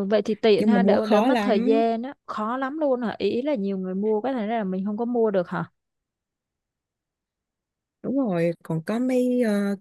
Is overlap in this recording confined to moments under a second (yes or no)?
no